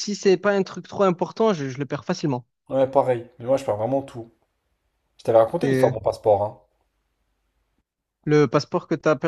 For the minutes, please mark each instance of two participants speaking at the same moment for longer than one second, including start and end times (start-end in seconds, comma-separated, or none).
none